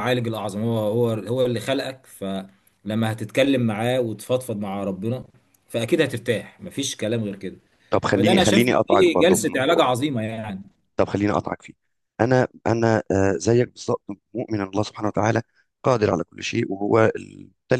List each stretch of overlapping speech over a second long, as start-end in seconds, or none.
8.1-9.9